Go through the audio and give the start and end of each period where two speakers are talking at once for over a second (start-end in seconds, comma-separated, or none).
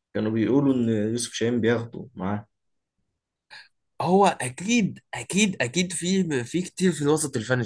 none